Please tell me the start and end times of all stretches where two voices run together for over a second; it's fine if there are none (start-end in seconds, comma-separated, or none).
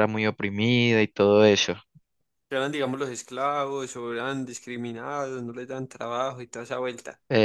none